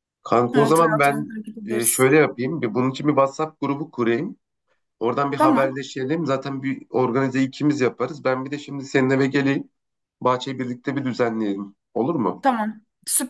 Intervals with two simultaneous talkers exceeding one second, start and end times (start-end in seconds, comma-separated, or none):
0.5-2.1